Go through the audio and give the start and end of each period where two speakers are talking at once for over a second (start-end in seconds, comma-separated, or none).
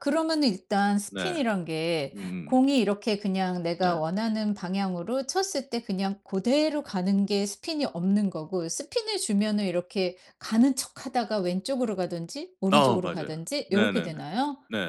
12.7-14.1